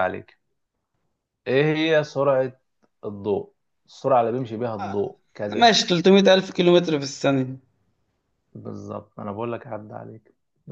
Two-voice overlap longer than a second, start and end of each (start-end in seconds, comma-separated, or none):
none